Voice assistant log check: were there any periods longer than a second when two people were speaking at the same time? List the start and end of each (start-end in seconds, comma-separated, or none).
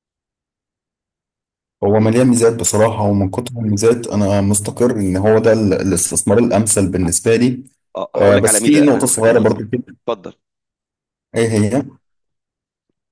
8.2-9.5